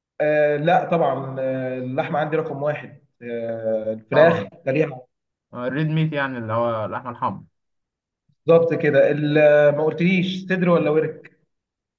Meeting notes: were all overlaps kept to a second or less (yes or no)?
yes